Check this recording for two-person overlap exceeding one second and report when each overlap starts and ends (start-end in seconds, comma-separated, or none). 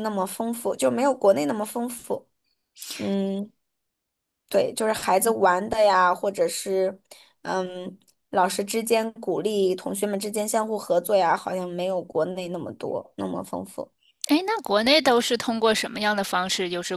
none